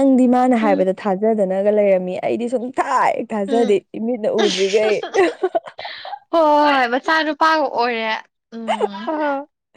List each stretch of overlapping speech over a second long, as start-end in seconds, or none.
none